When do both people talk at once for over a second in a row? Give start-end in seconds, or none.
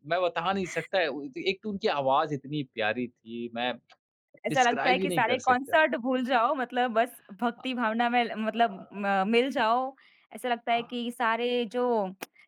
4.5-5.7